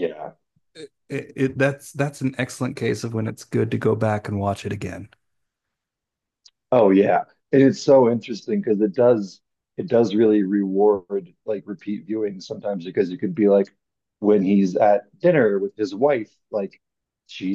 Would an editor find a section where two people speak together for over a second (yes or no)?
no